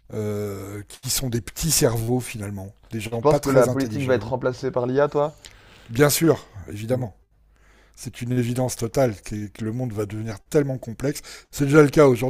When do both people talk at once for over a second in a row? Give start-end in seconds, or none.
3.1-4.3